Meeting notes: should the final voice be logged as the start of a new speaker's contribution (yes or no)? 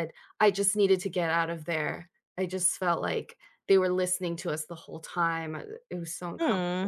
yes